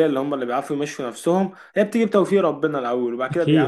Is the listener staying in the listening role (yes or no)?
yes